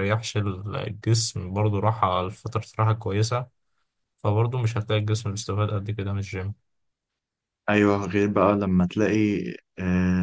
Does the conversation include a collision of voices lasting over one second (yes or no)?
no